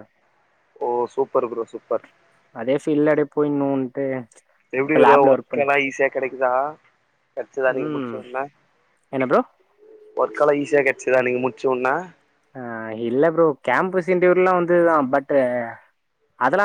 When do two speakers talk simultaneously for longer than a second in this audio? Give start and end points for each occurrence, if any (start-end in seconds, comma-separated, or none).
none